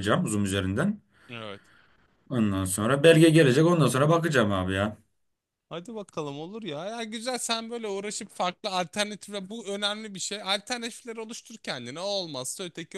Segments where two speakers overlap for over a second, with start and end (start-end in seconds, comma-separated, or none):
none